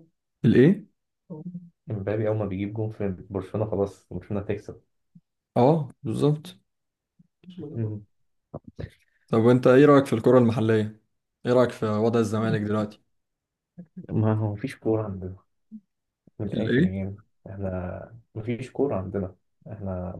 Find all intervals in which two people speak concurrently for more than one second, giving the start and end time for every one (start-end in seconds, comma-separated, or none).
none